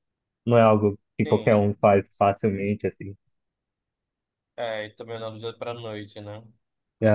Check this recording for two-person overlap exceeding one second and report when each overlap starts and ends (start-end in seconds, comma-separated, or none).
none